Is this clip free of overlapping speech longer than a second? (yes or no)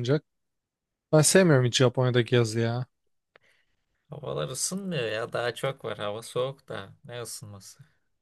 yes